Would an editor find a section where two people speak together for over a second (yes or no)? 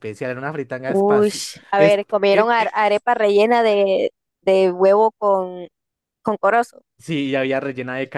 no